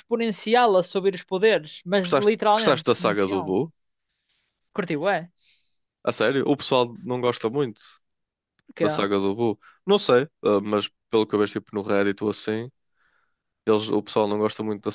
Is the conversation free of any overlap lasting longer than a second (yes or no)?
no